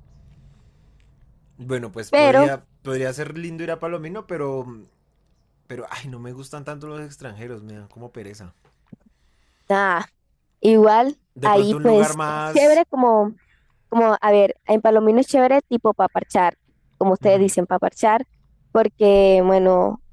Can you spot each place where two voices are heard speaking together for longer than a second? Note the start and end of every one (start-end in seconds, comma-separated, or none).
11.3-12.8